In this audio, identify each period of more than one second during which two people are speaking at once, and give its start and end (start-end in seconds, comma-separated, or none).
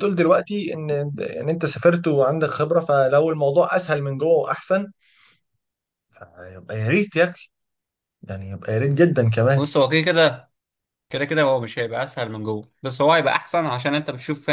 none